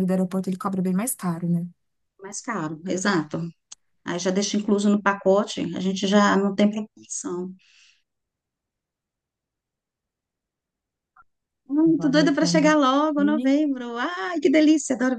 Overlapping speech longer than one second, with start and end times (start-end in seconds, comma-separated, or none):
11.8-13.6